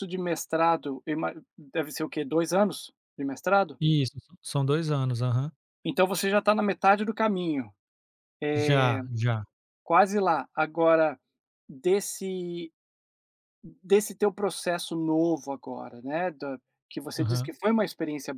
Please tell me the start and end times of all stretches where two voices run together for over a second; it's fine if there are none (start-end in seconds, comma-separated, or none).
none